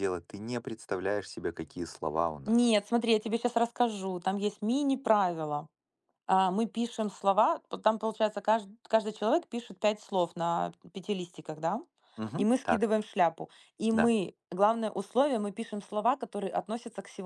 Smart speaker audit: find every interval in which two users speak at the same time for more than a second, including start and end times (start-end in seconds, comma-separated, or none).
none